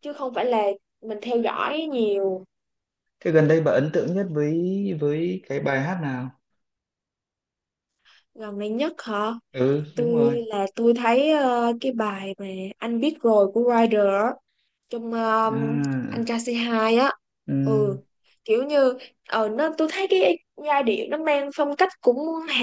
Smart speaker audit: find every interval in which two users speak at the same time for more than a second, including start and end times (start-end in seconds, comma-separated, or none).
none